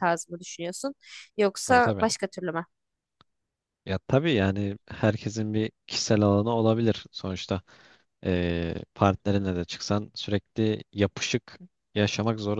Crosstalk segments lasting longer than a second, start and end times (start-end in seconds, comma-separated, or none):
none